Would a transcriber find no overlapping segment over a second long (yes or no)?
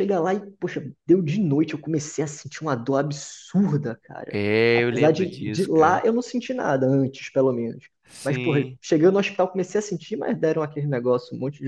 no